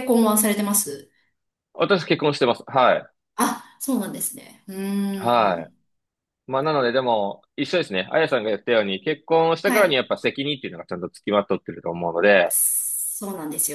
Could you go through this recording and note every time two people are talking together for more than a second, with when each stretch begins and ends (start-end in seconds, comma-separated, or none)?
none